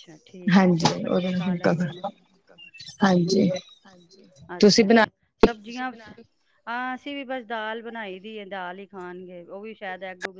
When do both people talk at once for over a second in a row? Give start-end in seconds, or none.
0.5-2.1